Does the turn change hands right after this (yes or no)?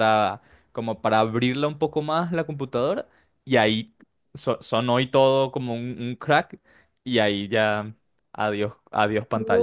yes